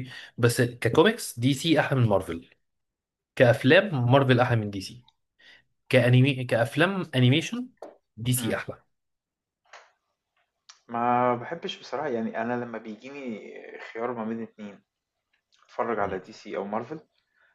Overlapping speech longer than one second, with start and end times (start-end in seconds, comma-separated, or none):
none